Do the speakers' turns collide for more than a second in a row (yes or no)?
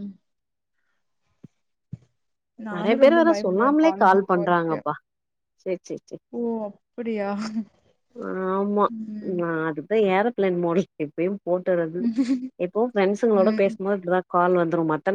yes